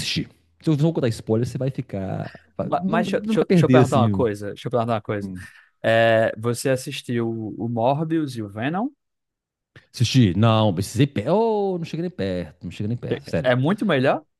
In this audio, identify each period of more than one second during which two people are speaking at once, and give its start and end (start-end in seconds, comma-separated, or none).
2.6-4.2